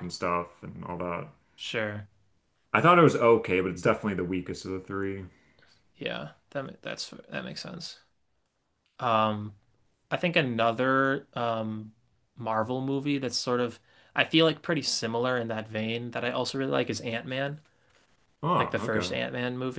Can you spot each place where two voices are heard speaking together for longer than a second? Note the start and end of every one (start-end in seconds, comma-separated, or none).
none